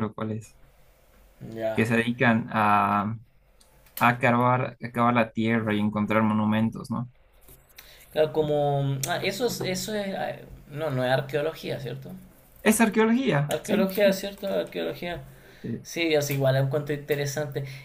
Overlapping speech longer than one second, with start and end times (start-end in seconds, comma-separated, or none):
none